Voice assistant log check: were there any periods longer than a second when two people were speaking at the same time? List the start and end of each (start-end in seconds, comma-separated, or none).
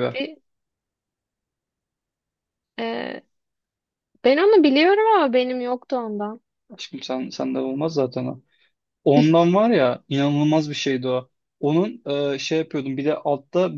none